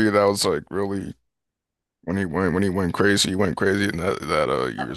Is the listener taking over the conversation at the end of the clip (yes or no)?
yes